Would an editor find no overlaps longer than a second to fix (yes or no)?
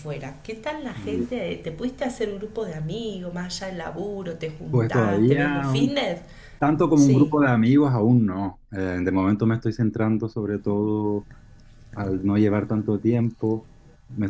no